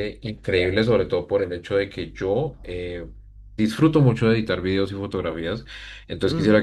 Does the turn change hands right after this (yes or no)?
no